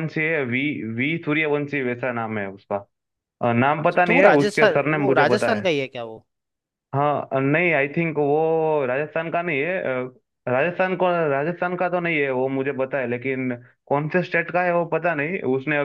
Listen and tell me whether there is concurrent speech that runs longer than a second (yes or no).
yes